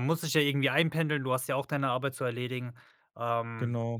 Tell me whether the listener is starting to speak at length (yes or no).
no